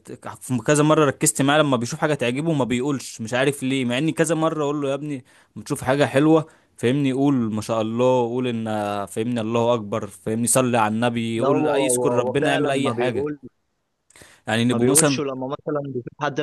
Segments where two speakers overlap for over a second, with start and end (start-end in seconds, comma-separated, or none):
11.4-13.3